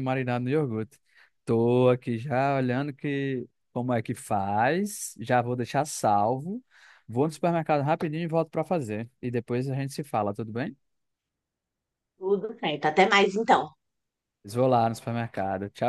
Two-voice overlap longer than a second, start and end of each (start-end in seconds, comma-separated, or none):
none